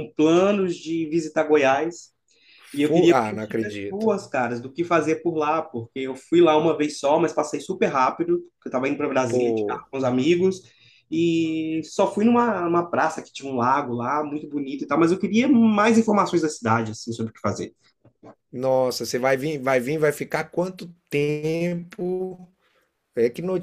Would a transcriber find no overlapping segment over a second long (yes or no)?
no